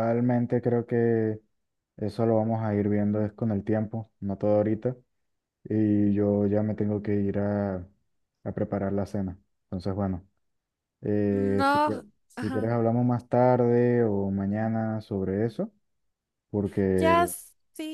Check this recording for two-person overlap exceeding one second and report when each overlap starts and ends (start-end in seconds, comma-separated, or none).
11.3-12.8